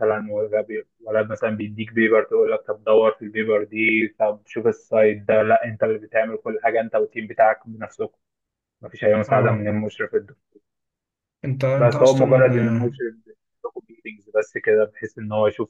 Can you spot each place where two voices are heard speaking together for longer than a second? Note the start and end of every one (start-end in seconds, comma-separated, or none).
11.8-13.0